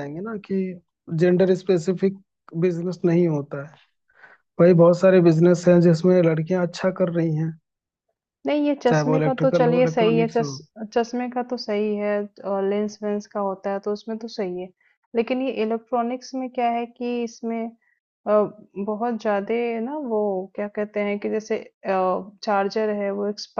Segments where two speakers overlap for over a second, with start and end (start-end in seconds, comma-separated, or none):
8.9-10.5